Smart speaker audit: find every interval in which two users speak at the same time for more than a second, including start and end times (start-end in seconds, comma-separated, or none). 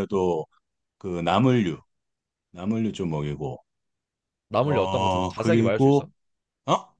4.6-6.1